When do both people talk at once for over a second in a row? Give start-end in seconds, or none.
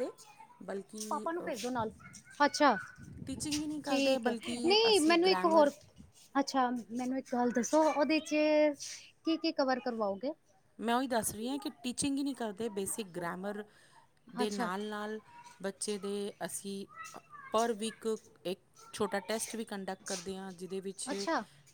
3.9-5.7